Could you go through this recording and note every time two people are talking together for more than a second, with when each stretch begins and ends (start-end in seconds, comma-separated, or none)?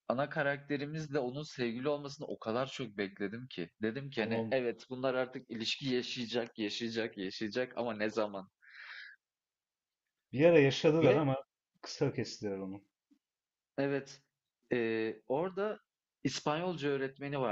none